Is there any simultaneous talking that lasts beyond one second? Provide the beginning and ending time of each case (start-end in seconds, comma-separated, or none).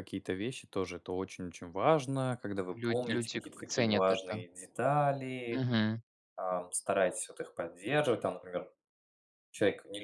2.7-4.4